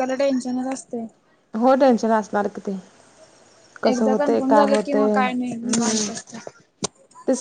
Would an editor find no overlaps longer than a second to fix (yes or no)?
no